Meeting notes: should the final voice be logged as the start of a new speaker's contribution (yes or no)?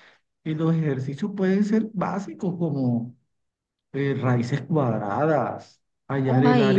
no